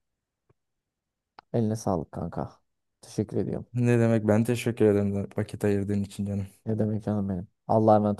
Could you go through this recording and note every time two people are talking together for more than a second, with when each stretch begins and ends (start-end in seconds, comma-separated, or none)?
none